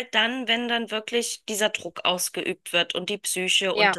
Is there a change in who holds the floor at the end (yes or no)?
no